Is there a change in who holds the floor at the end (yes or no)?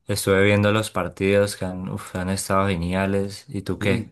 yes